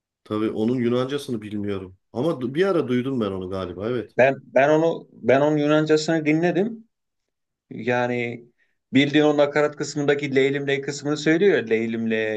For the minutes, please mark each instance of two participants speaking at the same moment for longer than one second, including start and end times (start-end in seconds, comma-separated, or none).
none